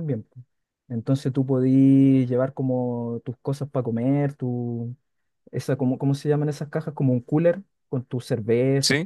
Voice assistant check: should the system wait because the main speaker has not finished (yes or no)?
yes